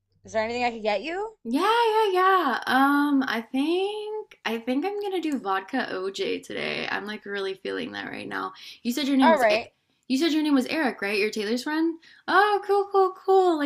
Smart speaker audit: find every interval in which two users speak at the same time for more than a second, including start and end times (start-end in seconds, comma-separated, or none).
none